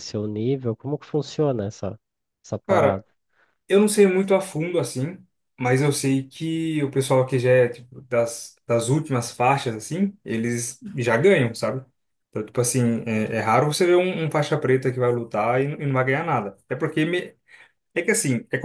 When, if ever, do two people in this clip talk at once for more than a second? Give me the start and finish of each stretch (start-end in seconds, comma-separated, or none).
none